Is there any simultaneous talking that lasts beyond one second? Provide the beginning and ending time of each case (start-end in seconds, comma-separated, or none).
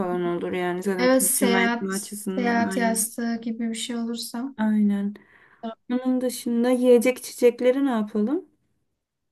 1.0-3.1